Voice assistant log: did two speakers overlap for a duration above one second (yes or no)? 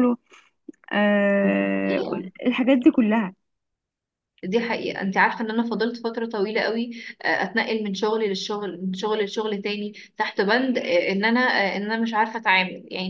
no